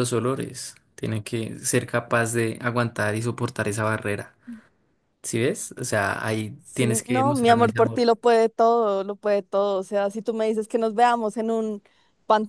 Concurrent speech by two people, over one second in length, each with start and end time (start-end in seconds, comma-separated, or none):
6.6-8.1